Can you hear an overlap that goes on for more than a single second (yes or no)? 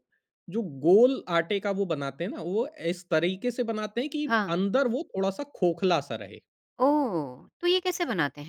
no